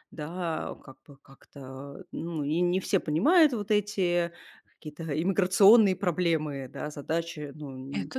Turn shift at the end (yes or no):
no